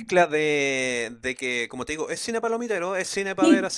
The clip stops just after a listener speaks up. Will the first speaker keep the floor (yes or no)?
yes